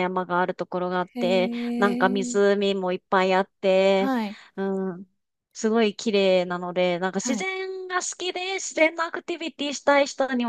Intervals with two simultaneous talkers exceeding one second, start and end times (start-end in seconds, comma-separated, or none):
1.1-2.6